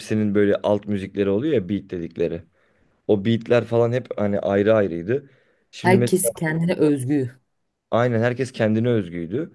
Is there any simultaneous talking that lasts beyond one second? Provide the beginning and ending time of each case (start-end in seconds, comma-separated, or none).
none